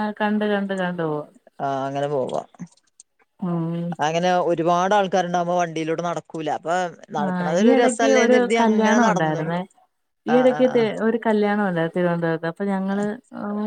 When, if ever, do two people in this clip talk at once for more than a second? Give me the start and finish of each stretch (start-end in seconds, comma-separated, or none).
7.3-9.4